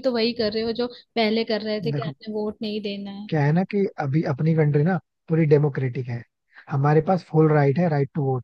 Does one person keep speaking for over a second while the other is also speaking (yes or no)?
no